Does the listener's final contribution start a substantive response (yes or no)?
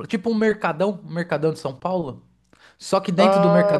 no